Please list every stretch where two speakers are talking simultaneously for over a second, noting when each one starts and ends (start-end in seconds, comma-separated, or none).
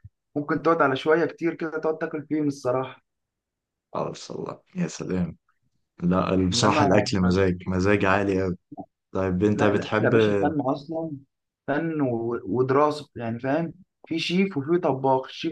none